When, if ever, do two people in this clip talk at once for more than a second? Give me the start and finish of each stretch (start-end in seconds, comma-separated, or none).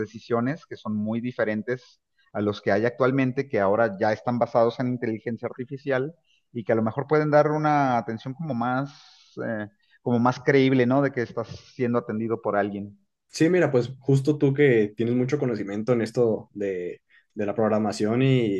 none